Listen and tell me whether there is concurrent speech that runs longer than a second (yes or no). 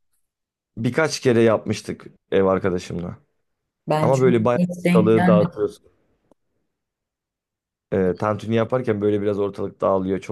yes